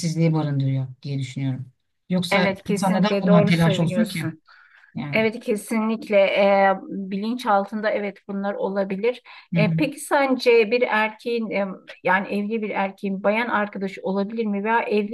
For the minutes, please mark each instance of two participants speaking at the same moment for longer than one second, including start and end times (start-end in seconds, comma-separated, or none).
2.3-4.3